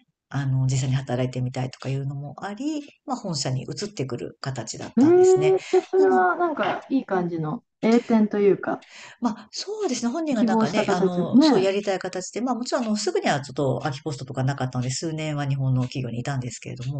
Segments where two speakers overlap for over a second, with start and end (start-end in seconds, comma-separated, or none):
10.4-11.7